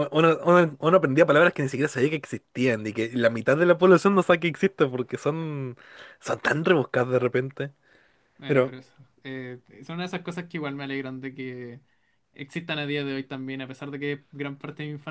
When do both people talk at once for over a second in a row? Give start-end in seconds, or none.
none